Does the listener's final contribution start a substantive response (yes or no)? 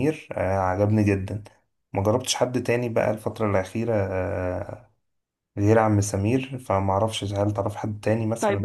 yes